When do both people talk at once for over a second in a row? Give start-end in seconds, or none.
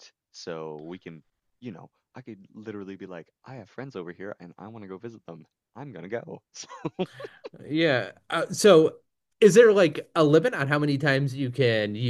none